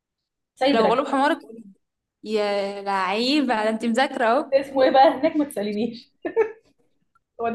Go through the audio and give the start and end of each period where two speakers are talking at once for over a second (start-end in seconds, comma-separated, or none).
none